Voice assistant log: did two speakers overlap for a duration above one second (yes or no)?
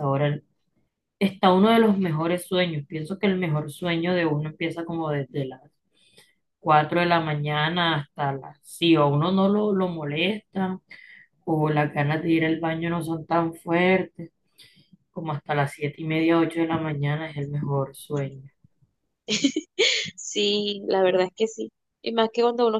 no